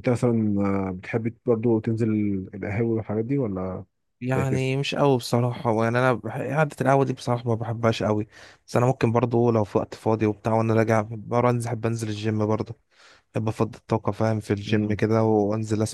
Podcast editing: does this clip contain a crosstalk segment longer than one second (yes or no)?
no